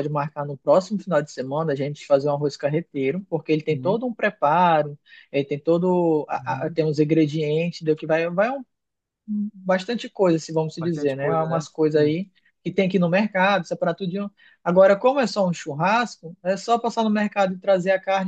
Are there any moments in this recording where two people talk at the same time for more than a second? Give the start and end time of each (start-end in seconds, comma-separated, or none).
10.8-12.2